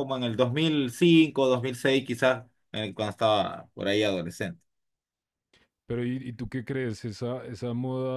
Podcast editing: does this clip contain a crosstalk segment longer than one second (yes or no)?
no